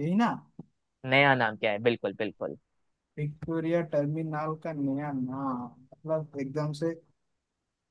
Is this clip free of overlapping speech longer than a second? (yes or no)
yes